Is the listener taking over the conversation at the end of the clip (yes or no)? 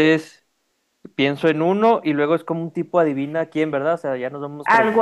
yes